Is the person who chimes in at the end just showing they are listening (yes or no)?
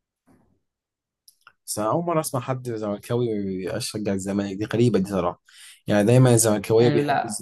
yes